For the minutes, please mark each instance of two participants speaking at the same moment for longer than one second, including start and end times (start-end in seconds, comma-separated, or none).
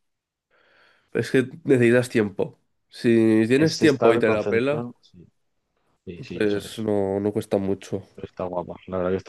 3.6-4.9